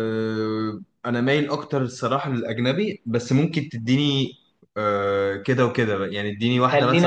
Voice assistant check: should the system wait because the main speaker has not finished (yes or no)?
no